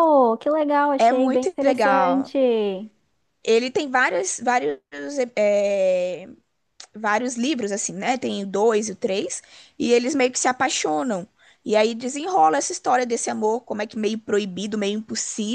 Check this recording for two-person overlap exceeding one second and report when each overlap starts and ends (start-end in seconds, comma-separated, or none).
1.0-2.3